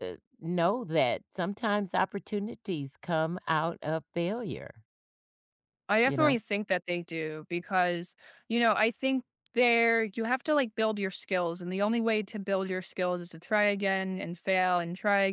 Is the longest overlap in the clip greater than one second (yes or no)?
no